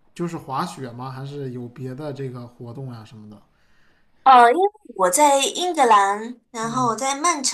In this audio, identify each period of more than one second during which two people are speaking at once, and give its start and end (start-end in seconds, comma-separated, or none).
none